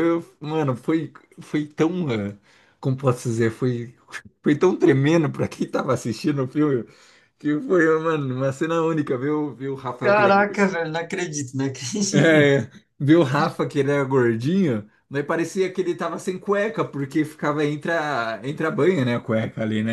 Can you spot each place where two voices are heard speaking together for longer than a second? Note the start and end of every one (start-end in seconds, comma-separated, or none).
none